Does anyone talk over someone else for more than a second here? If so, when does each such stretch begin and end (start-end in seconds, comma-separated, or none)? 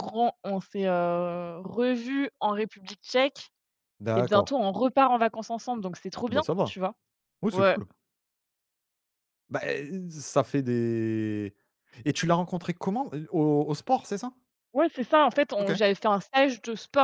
none